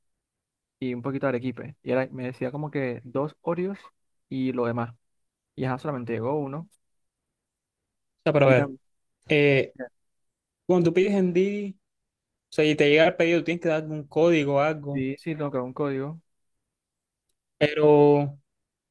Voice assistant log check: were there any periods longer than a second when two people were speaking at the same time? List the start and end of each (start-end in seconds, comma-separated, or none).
none